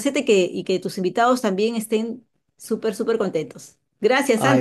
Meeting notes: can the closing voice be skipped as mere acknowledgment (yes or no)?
no